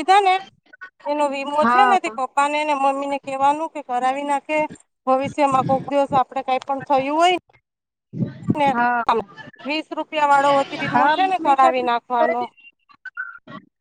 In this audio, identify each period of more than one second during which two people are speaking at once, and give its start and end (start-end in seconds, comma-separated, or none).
10.9-12.4